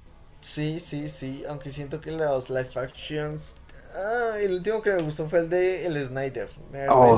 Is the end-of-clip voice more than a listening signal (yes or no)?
yes